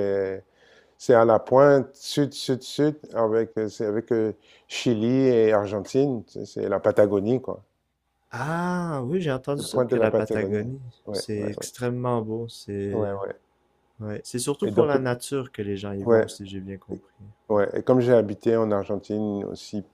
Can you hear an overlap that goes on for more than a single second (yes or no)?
yes